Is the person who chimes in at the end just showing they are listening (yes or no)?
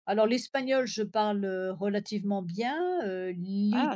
yes